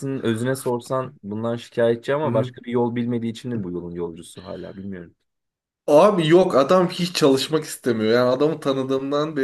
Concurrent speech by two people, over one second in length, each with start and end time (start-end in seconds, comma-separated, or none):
none